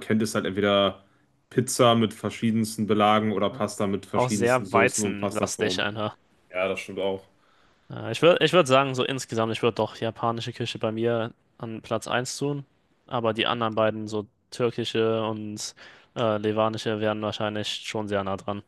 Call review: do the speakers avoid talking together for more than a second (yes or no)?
no